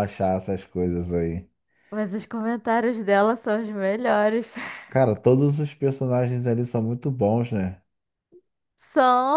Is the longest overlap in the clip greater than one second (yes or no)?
no